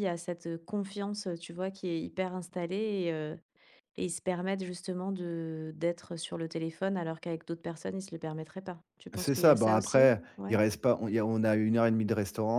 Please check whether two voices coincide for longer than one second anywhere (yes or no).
yes